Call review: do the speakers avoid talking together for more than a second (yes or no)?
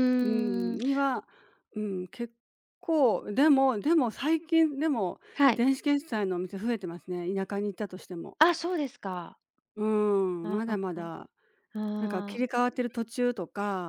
yes